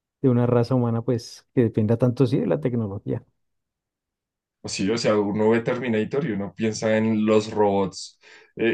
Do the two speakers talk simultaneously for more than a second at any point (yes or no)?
no